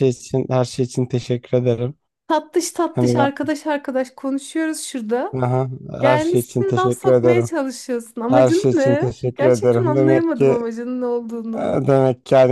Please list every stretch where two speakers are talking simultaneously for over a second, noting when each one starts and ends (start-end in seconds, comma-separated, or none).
6.0-7.5, 8.3-10.6